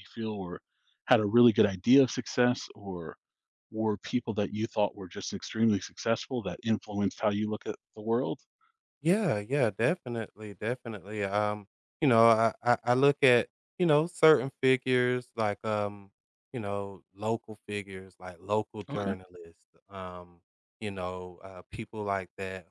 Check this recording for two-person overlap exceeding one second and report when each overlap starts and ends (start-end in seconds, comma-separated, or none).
none